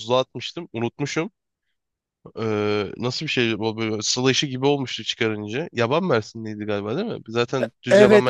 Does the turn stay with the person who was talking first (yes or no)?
no